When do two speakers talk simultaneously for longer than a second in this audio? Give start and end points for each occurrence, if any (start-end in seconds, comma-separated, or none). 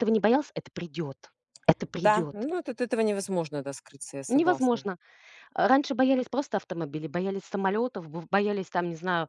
none